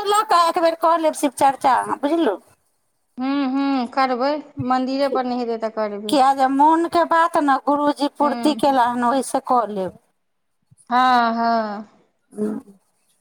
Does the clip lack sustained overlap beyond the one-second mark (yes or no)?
yes